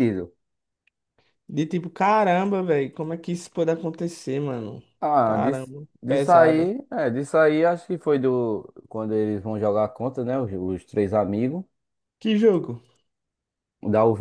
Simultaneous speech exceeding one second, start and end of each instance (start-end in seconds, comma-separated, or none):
5.2-6.7